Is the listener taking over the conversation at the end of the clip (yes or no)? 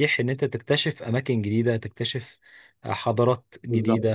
no